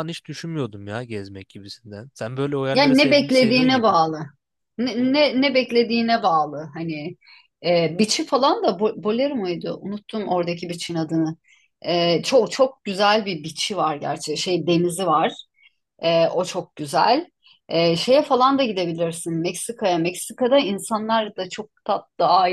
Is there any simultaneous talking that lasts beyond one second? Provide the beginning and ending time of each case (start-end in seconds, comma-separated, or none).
2.7-3.9